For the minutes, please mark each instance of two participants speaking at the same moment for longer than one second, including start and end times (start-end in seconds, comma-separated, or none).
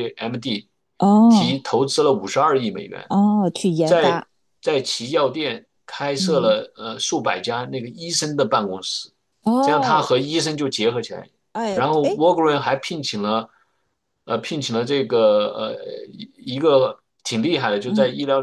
none